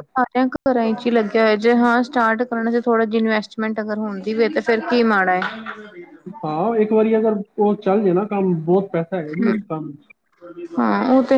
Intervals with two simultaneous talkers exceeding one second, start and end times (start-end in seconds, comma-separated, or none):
none